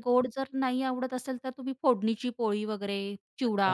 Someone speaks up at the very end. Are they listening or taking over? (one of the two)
taking over